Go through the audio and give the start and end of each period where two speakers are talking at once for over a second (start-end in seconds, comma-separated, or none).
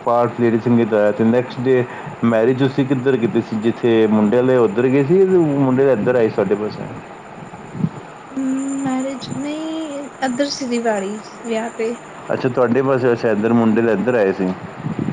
none